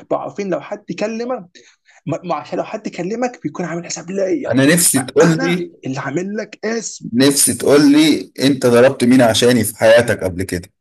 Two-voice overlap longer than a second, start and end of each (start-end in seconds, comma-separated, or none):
none